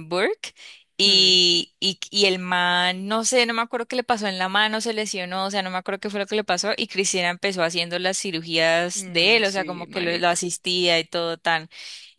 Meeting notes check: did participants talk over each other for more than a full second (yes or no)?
yes